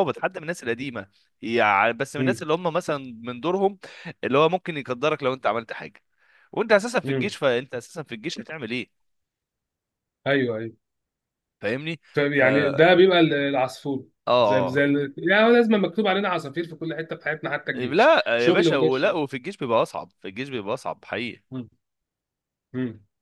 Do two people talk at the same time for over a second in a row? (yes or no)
yes